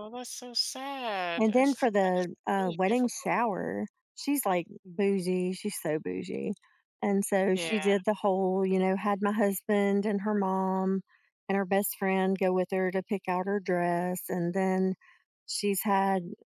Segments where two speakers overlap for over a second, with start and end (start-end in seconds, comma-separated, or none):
1.4-3.3